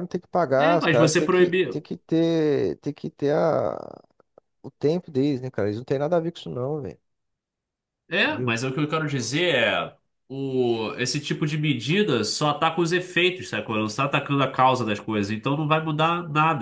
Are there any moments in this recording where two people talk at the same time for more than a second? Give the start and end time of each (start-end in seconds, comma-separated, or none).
0.6-1.9